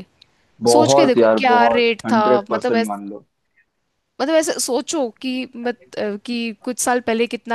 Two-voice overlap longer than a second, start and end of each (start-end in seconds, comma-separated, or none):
0.7-2.9